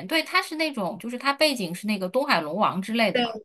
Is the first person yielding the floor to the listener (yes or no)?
no